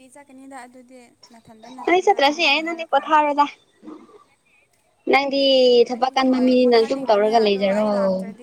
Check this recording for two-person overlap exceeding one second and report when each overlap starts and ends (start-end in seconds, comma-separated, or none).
1.9-3.2, 5.9-7.9